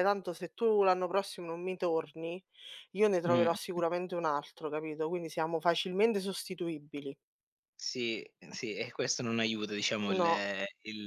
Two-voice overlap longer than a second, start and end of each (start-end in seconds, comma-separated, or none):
none